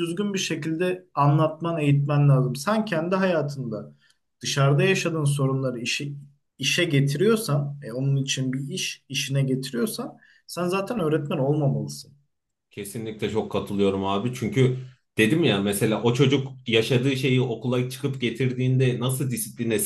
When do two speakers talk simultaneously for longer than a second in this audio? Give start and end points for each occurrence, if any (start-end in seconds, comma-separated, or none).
none